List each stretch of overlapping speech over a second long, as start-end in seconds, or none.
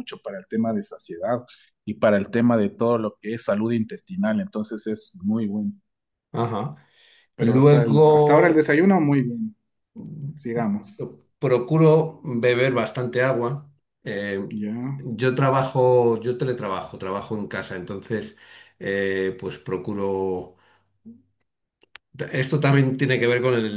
7.4-8.7